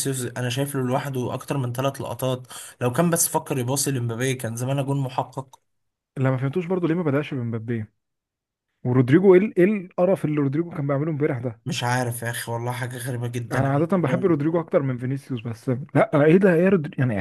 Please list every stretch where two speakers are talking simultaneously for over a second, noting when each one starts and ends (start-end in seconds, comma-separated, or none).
none